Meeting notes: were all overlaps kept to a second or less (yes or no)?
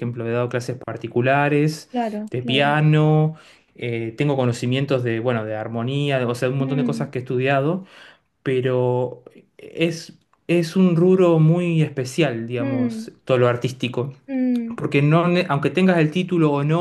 yes